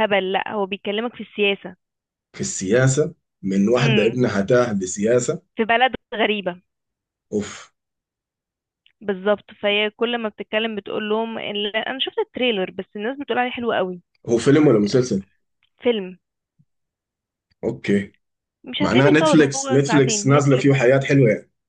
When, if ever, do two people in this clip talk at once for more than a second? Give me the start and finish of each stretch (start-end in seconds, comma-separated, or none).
18.8-20.7